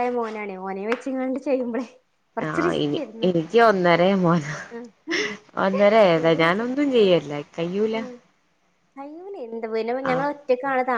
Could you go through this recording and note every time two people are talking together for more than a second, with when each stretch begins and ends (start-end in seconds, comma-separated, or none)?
none